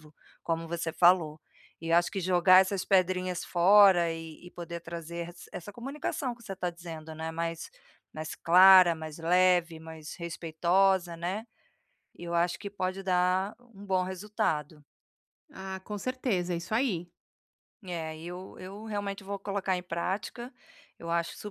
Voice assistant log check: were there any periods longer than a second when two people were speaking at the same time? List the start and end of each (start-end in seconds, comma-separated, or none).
none